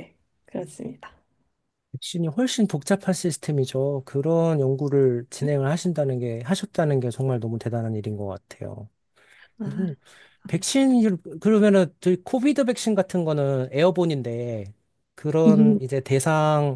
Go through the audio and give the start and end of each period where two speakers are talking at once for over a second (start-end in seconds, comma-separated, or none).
none